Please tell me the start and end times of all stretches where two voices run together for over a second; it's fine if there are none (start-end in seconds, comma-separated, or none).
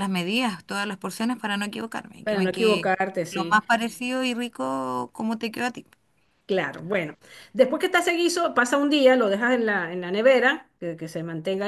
2.2-3.6